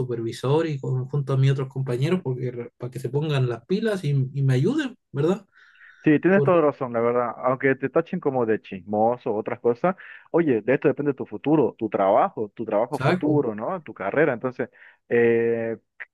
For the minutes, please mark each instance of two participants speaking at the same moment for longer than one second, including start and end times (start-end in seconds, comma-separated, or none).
none